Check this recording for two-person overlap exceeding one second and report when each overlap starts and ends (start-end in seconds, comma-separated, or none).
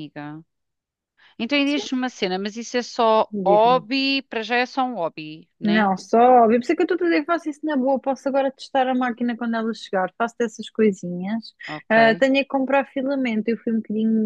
none